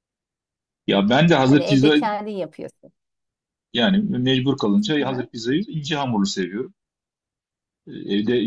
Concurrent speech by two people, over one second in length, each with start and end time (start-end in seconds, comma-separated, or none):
none